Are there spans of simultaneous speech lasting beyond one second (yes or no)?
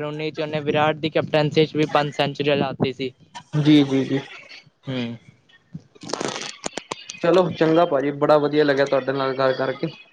no